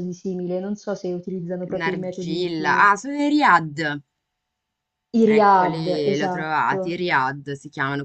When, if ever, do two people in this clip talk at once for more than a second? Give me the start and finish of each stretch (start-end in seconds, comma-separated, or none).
1.7-2.9, 5.3-6.8